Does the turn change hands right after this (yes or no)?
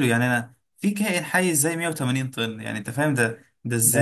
yes